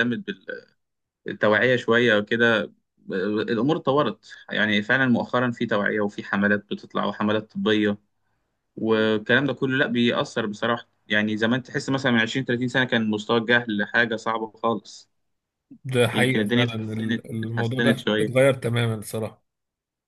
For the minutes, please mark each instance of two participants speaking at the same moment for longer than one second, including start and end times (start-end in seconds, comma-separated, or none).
16.1-18.3